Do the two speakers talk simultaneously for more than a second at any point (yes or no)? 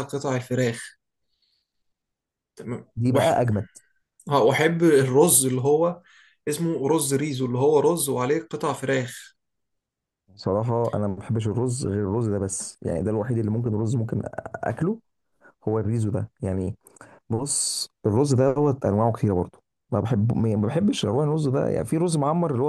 no